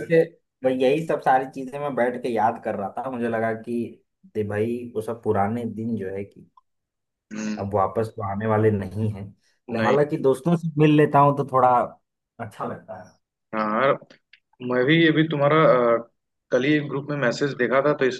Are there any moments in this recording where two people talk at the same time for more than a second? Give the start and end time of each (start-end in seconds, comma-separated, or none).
none